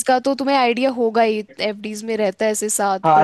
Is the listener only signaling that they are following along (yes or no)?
no